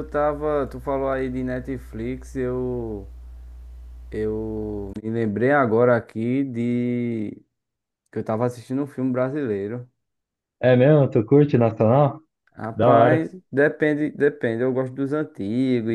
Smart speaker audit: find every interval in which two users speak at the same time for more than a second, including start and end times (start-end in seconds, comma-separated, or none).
none